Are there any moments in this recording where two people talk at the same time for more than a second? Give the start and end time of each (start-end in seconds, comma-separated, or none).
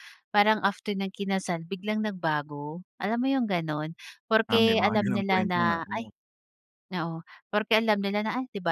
4.5-6.1